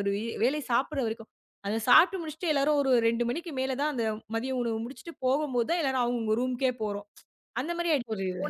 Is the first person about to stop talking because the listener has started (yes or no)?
no